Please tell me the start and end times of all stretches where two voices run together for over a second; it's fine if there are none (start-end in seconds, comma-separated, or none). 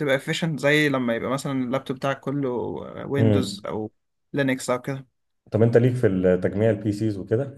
none